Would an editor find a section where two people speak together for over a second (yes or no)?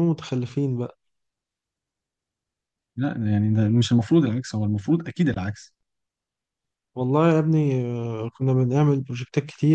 no